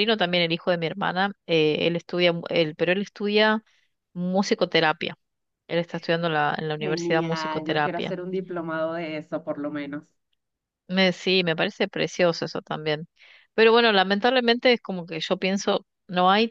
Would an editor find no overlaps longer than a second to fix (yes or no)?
no